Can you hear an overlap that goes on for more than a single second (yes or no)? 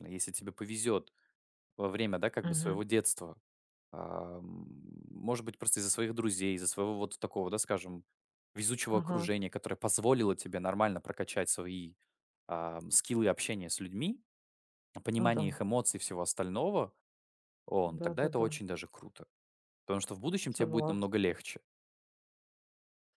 no